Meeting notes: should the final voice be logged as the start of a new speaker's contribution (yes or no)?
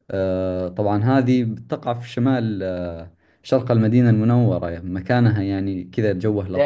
yes